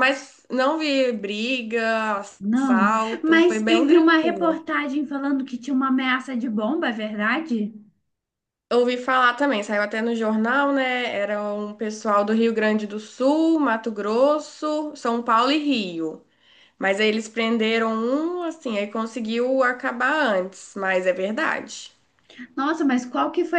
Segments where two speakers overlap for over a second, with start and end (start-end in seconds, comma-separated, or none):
2.4-4.6